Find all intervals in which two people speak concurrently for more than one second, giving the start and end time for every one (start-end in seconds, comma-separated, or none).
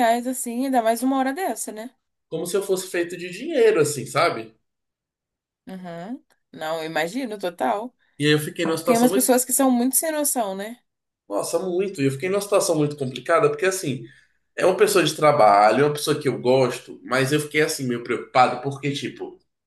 none